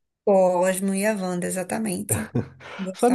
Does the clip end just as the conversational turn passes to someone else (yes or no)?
yes